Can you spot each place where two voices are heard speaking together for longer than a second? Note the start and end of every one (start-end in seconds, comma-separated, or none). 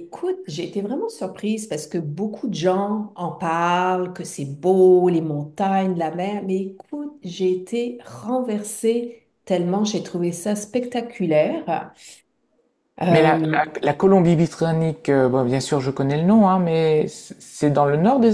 none